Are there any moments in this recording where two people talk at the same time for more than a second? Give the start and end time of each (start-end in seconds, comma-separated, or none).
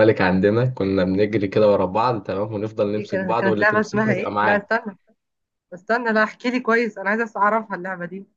3.0-4.8